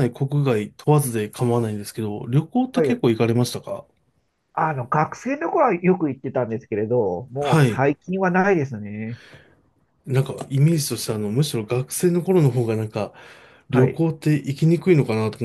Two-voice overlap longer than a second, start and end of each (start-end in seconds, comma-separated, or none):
none